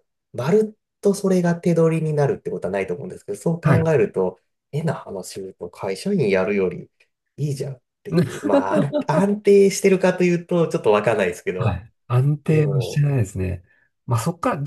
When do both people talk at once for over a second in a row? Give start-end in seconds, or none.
none